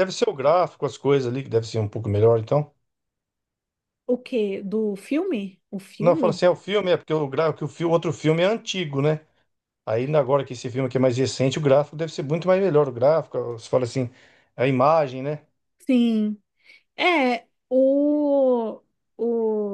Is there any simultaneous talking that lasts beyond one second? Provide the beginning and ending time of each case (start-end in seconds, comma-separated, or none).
none